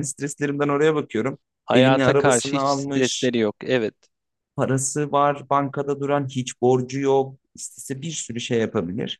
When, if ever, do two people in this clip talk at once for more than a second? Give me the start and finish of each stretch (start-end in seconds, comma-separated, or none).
1.6-3.3